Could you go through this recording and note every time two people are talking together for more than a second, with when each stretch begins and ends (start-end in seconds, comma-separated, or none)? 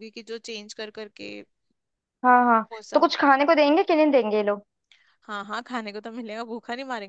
none